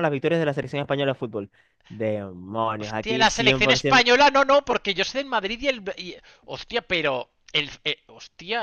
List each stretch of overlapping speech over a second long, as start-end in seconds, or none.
2.8-4.1